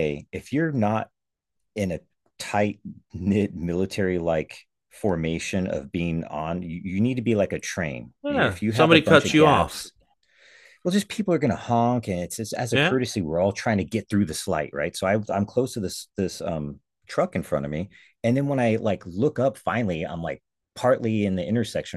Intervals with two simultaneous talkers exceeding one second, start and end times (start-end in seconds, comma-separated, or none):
8.2-9.9